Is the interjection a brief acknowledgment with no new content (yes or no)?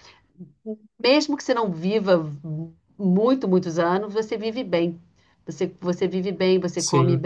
yes